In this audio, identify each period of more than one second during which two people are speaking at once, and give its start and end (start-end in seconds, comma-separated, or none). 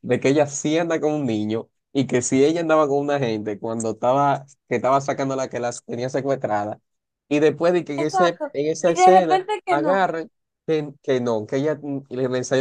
8.0-10.1